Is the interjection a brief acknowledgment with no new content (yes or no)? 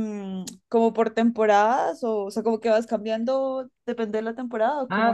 no